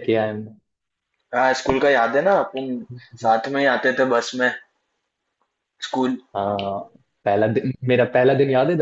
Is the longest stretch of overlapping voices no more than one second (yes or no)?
yes